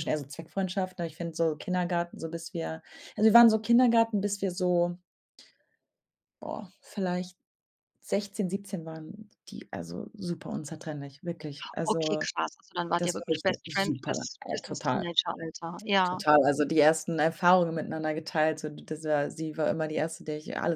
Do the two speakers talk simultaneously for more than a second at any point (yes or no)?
yes